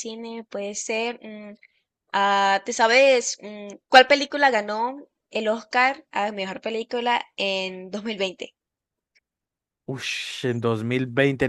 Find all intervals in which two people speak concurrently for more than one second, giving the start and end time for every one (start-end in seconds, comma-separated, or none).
none